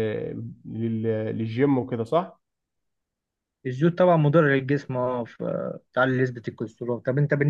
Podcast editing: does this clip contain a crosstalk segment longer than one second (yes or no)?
no